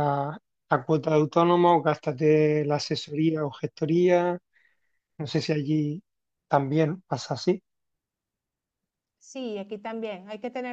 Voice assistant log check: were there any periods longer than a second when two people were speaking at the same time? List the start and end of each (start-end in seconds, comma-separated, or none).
none